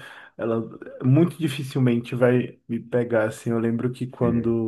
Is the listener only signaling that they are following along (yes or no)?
yes